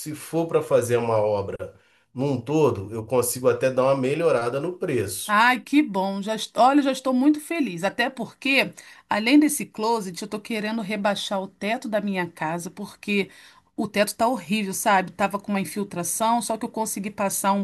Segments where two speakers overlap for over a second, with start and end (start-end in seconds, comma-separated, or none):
none